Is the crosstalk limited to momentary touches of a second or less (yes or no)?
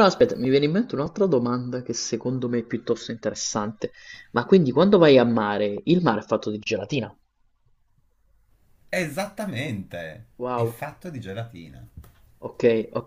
yes